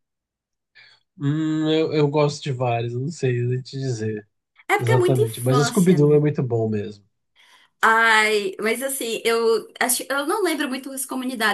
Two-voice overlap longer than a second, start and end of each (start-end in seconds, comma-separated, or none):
4.8-6.2